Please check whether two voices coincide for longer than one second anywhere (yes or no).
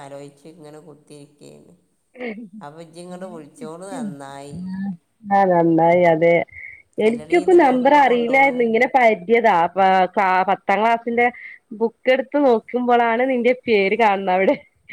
yes